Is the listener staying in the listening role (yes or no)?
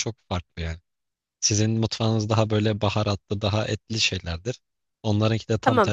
yes